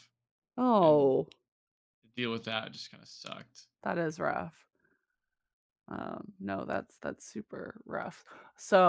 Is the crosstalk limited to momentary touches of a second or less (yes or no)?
yes